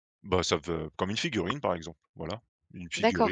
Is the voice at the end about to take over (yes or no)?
yes